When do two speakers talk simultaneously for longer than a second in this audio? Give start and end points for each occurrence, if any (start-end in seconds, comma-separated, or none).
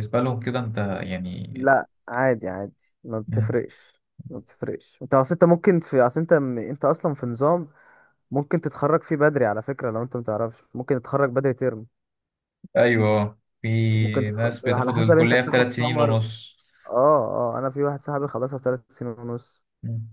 13.9-16.2